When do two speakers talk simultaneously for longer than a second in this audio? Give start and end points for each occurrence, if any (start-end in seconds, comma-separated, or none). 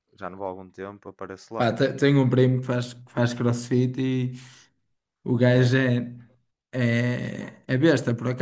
none